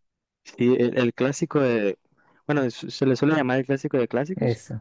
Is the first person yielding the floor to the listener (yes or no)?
no